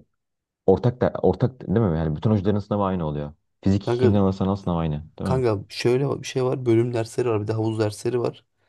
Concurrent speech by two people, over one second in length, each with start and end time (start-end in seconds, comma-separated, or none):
none